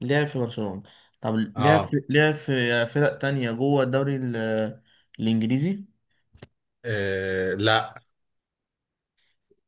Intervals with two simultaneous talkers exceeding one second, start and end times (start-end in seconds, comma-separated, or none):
none